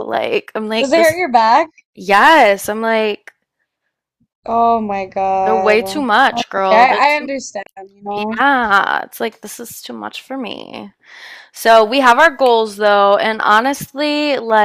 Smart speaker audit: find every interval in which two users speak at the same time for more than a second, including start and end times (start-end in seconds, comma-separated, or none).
5.5-7.3